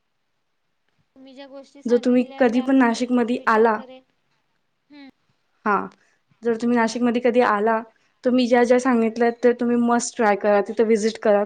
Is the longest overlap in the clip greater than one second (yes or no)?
yes